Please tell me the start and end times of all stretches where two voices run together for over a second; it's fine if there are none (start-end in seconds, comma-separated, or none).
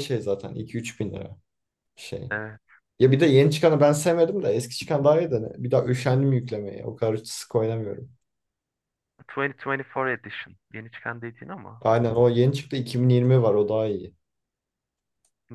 none